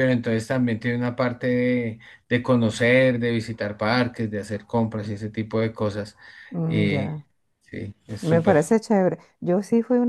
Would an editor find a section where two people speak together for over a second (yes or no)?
no